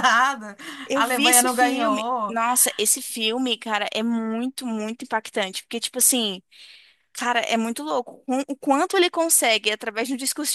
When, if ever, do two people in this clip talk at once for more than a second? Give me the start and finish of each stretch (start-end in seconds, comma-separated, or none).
0.9-2.4